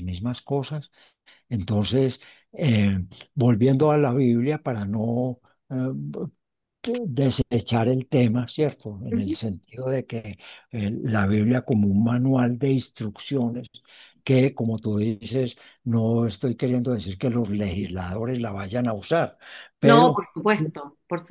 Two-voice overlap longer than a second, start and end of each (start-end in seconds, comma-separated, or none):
none